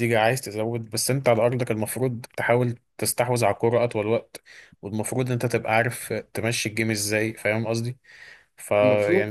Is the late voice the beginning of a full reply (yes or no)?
no